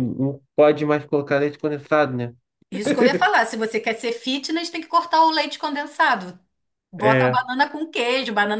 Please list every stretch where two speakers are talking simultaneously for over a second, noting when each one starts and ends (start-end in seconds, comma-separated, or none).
none